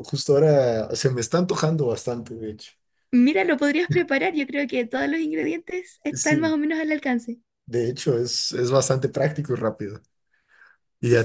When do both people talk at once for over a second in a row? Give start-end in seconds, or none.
none